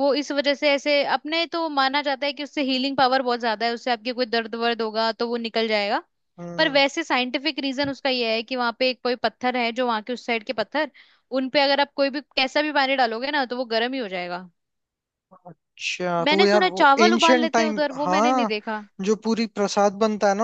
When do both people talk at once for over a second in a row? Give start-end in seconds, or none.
16.3-18.5